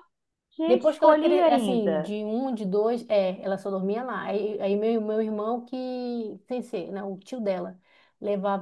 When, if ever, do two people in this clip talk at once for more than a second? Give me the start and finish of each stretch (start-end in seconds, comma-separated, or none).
0.7-2.1